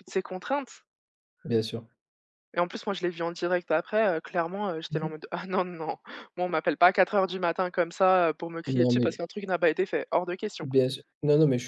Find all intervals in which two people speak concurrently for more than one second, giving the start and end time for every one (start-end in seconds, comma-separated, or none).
none